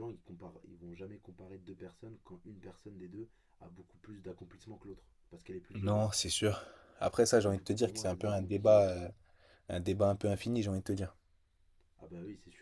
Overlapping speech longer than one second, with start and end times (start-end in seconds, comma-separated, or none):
7.5-8.8